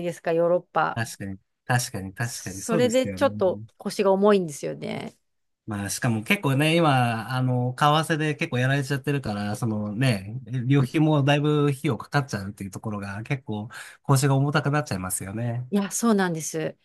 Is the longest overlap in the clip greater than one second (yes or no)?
yes